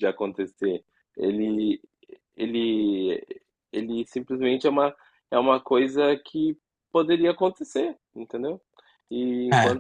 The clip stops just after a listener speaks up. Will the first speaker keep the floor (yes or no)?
yes